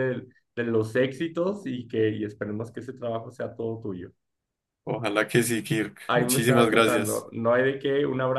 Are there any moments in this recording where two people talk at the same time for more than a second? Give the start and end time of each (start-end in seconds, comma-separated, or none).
6.1-7.3